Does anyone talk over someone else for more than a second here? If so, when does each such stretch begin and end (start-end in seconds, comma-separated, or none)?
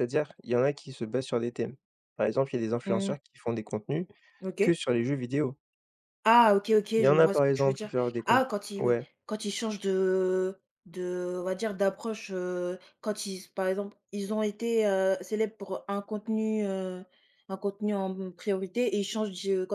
7.0-9.0